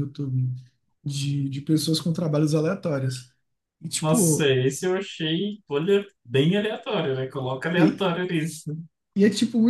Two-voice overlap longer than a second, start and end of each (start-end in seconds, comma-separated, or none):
none